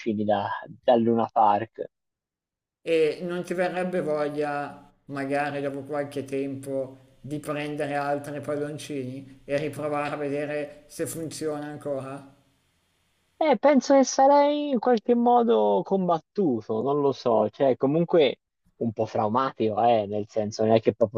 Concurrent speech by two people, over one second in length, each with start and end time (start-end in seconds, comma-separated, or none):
none